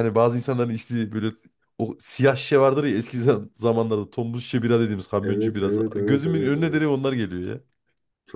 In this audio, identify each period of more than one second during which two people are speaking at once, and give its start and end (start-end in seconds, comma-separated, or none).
5.2-6.8